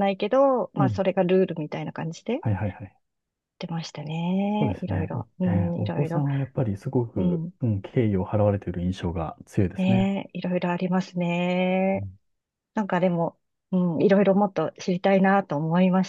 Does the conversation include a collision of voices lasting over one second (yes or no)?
yes